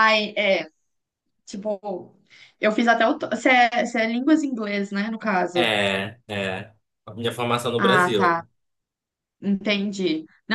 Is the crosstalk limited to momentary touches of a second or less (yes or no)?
yes